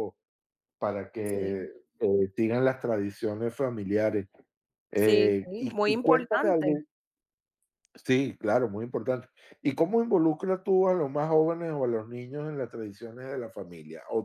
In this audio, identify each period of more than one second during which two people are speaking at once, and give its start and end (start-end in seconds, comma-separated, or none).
5.0-6.8